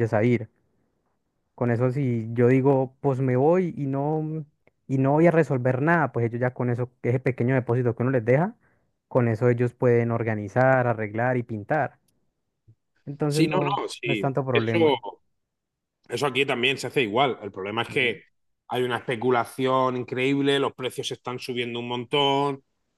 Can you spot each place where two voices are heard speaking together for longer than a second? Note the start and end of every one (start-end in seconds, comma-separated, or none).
13.3-14.8